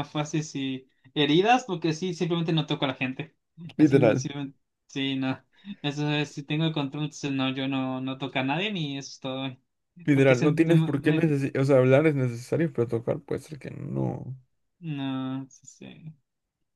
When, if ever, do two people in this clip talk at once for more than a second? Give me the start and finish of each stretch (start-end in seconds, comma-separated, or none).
10.1-11.3